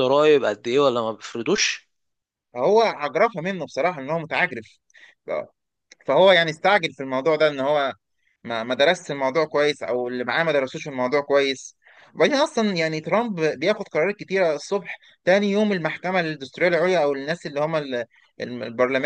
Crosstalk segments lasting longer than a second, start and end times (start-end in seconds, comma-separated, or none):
none